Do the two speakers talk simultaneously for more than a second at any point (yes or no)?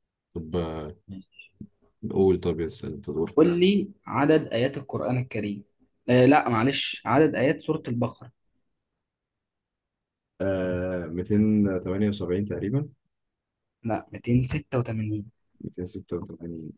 no